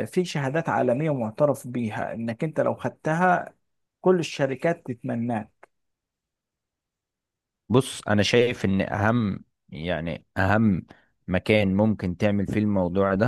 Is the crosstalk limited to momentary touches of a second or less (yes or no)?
yes